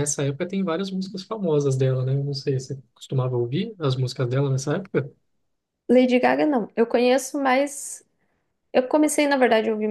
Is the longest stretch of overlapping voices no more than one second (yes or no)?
yes